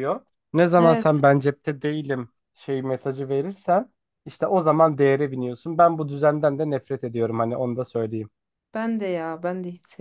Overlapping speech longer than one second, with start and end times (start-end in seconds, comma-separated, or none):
none